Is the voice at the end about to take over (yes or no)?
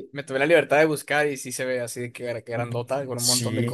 yes